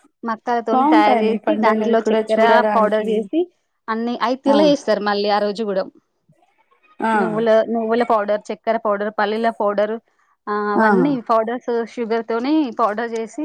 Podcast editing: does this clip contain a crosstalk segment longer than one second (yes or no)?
yes